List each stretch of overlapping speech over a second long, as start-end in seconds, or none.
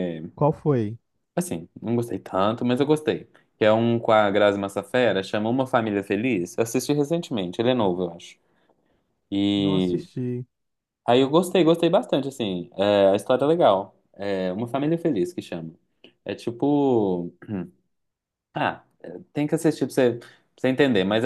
none